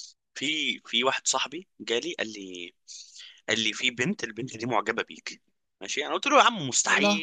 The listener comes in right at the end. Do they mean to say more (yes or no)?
no